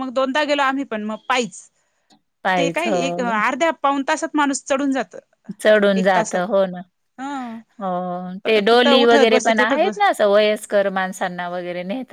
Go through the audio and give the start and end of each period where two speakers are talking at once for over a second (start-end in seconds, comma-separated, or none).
8.7-10.2